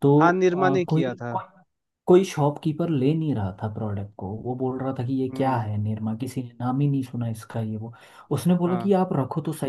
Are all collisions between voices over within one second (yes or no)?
yes